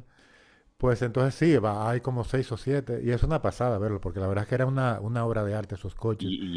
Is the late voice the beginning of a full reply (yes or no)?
yes